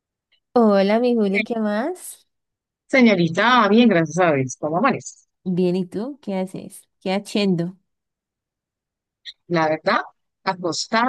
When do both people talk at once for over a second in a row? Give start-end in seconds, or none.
none